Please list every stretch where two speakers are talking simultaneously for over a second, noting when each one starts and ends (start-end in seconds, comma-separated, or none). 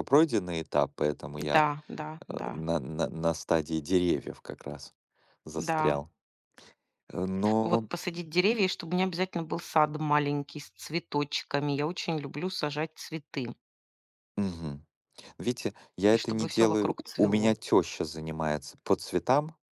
16.1-17.6